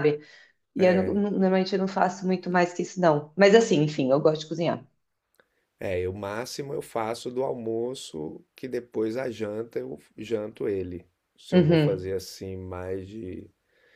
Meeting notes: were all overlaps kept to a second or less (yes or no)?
yes